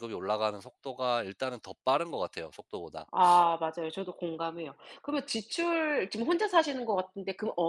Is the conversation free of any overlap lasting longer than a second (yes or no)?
yes